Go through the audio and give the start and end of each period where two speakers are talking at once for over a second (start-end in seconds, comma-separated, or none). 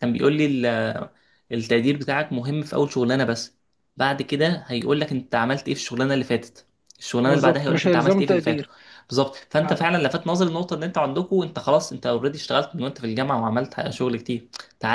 7.2-8.7